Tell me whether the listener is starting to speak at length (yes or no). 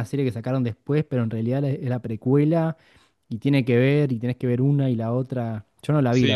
yes